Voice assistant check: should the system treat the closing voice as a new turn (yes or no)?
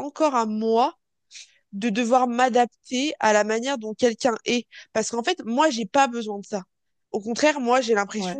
no